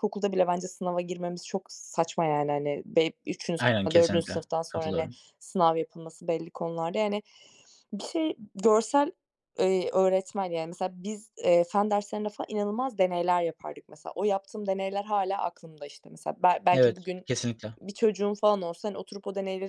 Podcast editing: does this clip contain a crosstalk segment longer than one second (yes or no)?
yes